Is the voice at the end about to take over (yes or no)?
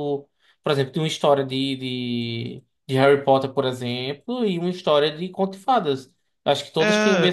no